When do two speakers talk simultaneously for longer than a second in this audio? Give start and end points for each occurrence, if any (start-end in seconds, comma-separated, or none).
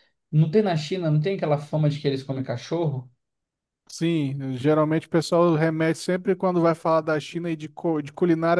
none